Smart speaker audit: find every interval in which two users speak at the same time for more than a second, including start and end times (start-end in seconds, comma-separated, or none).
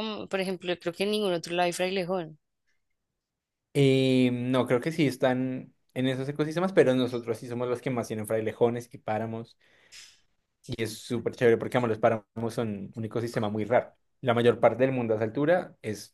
none